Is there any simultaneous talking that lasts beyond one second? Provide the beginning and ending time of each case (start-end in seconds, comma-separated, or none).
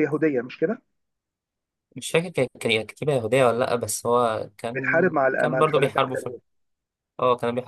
4.8-6.0